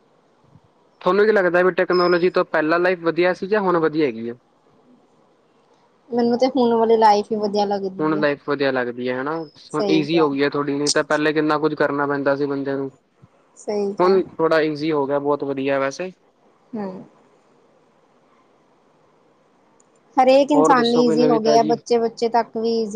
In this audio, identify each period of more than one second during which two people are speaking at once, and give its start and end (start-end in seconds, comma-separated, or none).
20.5-21.8